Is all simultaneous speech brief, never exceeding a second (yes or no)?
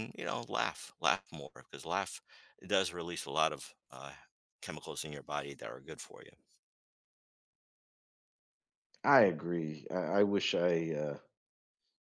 yes